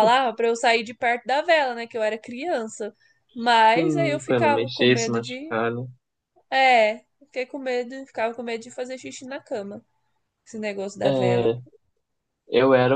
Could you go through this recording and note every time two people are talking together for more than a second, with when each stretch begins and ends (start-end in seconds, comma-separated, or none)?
3.7-5.5